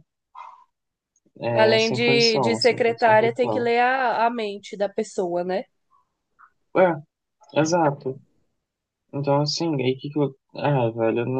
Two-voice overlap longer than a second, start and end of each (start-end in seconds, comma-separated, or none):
1.5-3.7